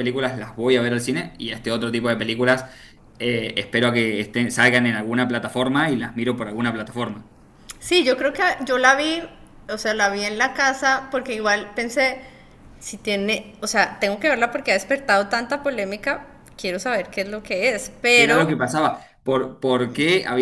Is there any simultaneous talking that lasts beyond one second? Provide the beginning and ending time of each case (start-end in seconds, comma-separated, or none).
none